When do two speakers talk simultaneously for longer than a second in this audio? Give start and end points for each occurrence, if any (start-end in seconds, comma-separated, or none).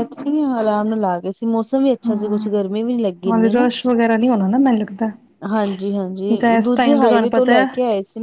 6.1-7.7